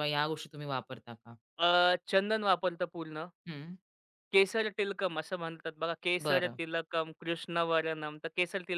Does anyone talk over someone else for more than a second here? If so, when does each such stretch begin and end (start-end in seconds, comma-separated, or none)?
none